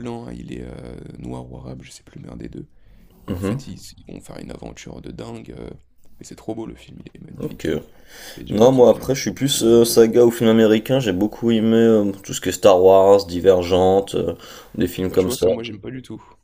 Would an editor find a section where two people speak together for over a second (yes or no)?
yes